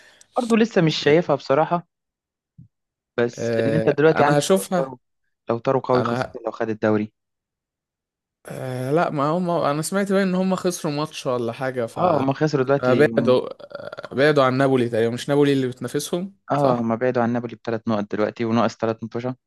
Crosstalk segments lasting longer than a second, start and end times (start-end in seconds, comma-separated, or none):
3.4-5.0